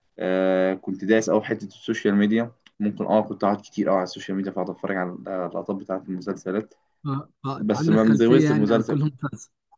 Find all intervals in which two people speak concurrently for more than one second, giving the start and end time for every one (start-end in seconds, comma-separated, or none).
7.5-9.0